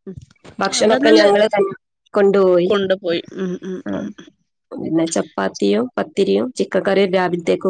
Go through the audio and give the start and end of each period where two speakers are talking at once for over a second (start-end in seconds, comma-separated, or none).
none